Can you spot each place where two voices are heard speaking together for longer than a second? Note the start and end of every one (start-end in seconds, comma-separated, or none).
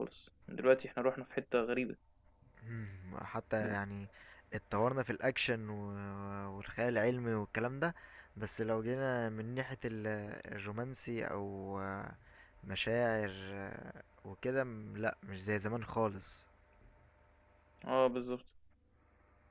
none